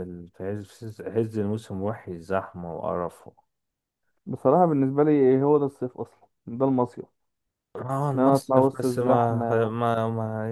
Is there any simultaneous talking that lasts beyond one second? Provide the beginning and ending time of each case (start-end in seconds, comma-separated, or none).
8.1-9.7